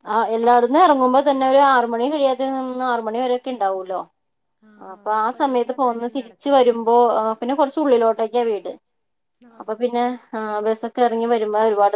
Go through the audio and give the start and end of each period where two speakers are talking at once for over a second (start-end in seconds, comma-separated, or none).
4.9-6.8